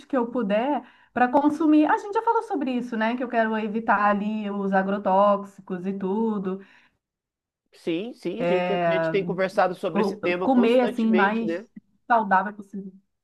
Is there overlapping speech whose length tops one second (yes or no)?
yes